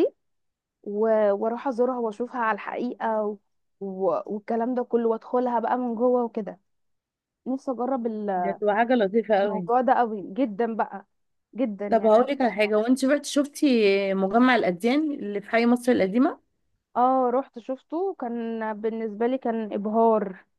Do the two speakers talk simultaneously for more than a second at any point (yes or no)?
no